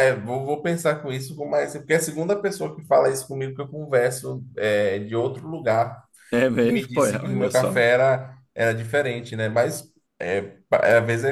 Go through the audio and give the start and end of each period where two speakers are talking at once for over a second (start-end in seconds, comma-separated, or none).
6.6-7.8